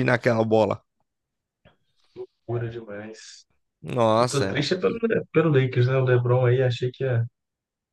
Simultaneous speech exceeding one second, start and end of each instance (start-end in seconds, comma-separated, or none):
none